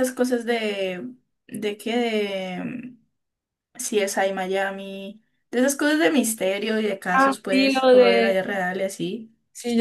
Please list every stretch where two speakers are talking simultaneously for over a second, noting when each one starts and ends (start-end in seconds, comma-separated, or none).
7.1-8.4